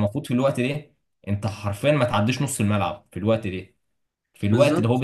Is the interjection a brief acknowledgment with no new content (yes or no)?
yes